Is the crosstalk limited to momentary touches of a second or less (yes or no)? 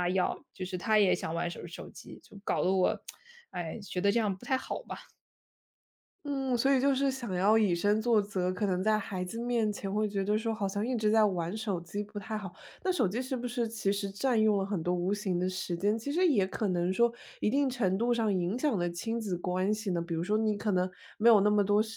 yes